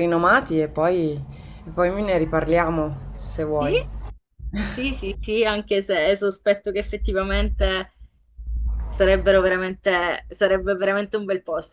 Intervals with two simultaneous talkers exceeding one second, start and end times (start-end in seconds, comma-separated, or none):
none